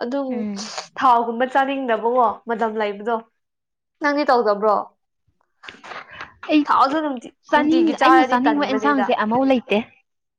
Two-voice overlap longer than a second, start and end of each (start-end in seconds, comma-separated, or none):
7.5-9.1